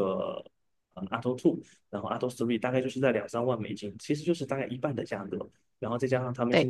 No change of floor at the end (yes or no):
yes